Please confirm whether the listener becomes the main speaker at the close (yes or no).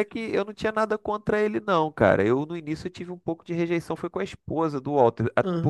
no